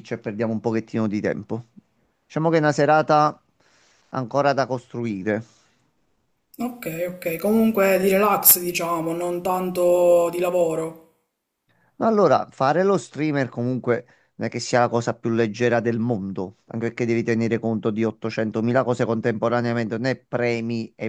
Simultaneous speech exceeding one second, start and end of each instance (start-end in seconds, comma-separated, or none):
none